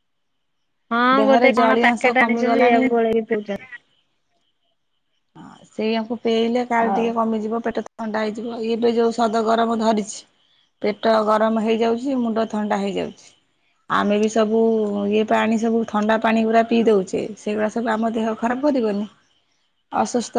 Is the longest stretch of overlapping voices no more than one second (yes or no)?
no